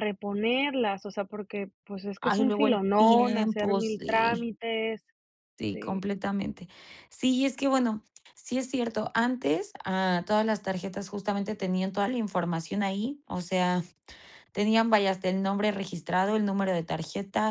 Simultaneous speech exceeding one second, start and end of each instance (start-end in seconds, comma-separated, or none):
2.2-4.5